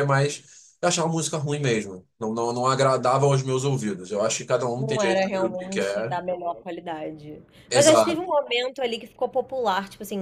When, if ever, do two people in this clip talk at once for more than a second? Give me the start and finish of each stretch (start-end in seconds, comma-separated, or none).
4.8-6.2